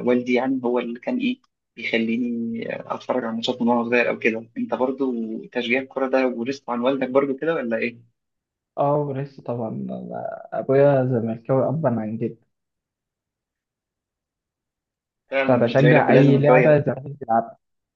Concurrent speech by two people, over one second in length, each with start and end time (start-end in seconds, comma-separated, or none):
15.5-16.9